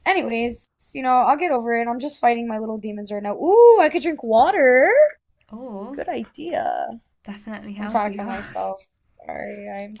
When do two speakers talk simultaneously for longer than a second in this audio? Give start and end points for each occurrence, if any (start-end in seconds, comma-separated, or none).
none